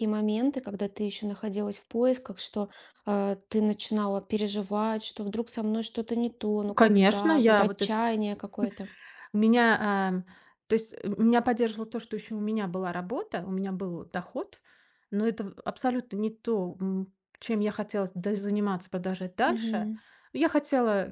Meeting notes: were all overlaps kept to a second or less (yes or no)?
no